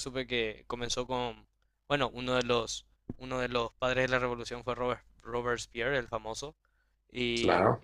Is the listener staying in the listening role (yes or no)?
yes